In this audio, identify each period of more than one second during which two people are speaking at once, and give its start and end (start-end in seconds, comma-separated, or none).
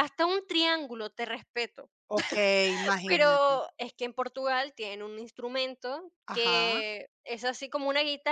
none